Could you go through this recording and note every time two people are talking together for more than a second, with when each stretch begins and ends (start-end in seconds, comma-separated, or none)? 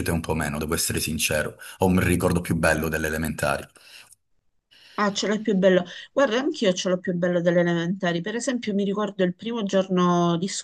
none